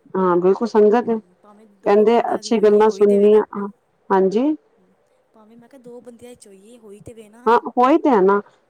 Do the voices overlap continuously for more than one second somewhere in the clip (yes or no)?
yes